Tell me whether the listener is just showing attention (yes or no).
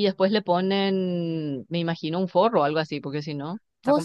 no